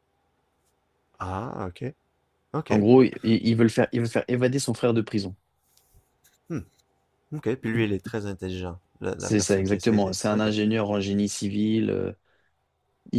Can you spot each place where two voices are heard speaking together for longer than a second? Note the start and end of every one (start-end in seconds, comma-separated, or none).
9.2-10.5